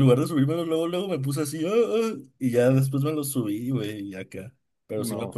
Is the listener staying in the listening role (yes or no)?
yes